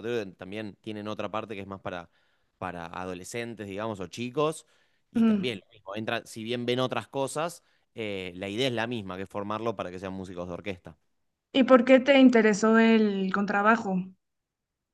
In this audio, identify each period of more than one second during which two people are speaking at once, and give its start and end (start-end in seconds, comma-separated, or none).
none